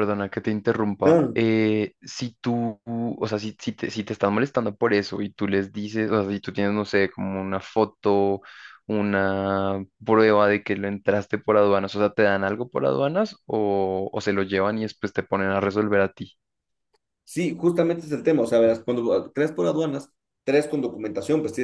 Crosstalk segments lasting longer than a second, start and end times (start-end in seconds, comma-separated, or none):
none